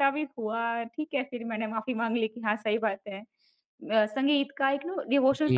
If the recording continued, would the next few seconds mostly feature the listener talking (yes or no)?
no